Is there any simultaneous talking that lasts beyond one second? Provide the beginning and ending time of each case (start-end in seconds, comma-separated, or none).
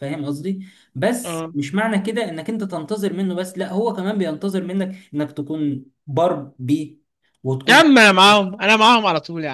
none